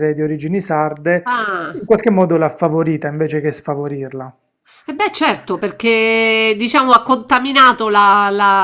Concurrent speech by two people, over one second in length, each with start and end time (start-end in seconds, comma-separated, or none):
none